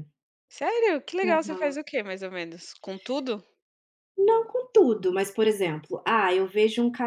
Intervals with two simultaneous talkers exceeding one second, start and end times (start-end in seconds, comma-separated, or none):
none